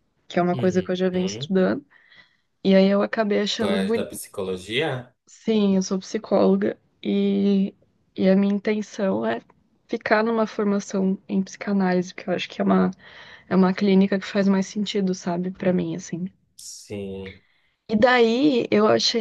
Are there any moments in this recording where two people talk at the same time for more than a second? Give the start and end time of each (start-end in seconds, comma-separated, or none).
none